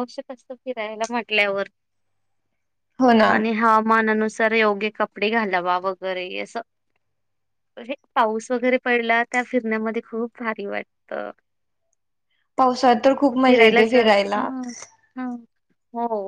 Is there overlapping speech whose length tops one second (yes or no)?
no